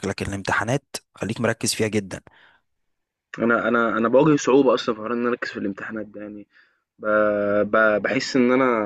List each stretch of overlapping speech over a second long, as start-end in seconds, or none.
none